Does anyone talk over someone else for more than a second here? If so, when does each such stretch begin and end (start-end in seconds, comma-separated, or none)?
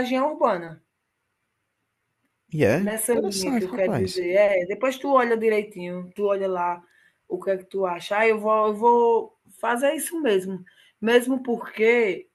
2.8-4.2